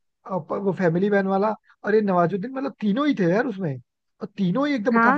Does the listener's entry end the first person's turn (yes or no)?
yes